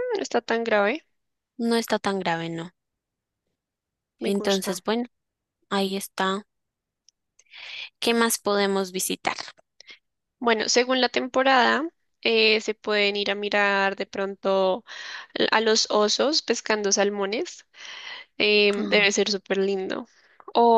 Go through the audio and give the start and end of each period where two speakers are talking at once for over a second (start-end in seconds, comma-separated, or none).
none